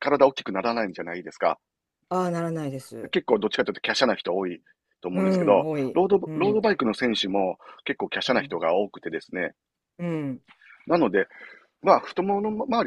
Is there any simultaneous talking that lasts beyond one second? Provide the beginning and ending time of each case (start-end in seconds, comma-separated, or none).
5.1-6.7